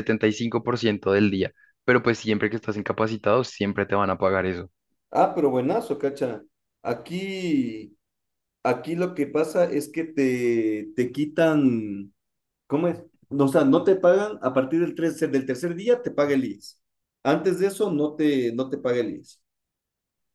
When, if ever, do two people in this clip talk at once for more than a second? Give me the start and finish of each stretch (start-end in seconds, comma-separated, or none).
none